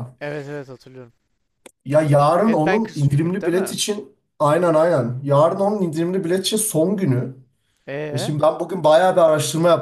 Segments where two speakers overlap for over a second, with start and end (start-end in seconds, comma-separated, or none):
2.4-3.8